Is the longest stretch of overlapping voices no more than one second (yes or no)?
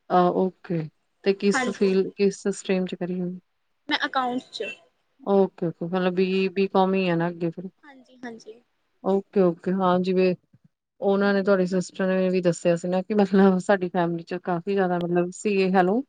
yes